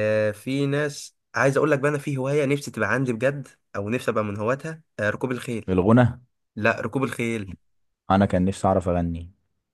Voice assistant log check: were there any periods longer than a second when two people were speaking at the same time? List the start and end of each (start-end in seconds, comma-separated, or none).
none